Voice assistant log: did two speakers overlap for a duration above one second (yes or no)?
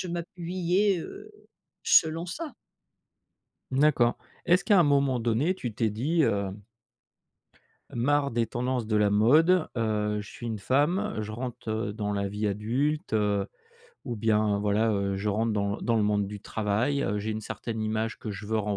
no